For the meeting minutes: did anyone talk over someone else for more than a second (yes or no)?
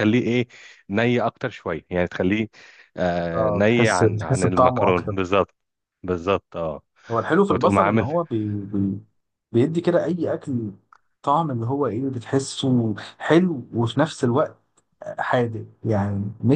yes